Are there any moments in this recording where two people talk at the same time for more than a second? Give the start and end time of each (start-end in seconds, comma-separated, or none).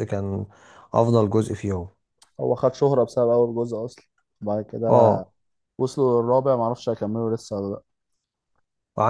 none